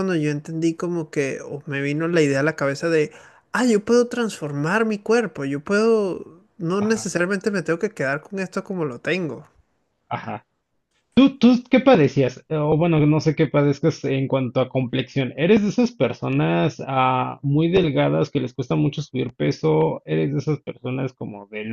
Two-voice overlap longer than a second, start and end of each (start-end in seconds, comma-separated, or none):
none